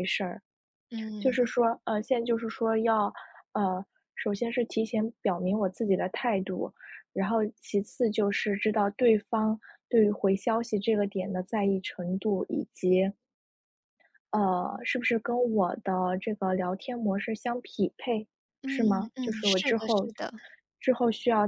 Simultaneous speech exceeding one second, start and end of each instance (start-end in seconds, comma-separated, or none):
18.6-20.1